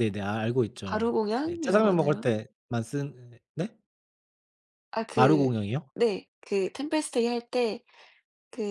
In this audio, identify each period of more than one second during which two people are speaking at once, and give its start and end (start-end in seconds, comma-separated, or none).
0.8-2.3